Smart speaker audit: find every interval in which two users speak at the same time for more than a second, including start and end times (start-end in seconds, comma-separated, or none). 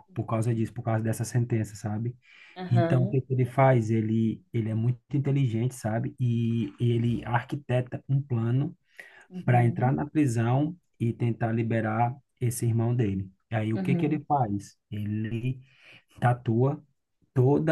none